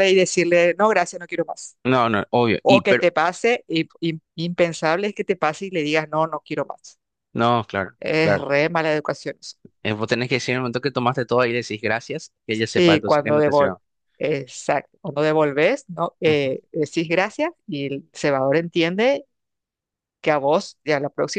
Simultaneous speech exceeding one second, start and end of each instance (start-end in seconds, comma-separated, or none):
12.5-13.8